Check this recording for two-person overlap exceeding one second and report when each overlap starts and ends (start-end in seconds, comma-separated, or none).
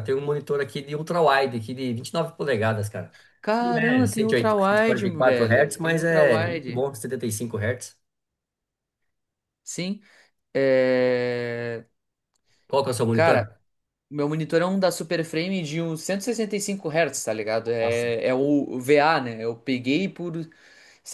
3.6-6.8